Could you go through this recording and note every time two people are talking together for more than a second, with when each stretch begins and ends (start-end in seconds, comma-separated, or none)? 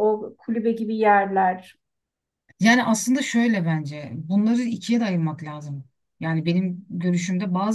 none